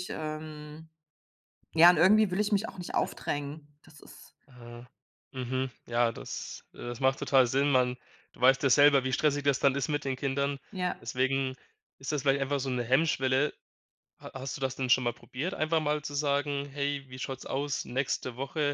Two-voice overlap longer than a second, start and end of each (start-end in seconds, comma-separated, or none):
none